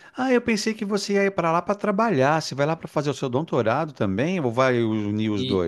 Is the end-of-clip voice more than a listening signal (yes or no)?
yes